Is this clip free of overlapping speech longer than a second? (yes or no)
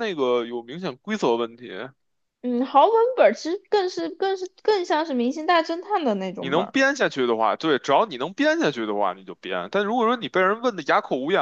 yes